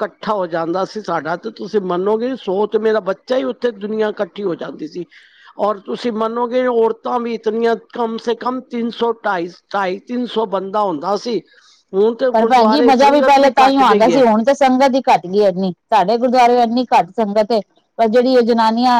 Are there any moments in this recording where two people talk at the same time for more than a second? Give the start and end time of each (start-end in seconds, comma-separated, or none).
12.3-14.2